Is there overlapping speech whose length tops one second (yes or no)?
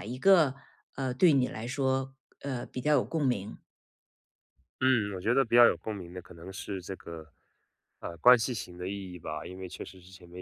no